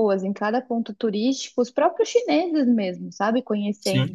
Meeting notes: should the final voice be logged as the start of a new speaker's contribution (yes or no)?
no